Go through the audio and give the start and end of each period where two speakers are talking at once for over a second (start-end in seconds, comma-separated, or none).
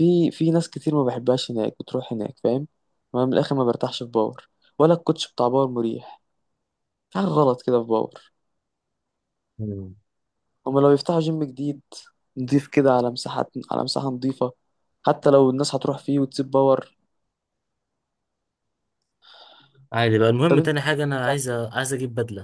20.5-21.8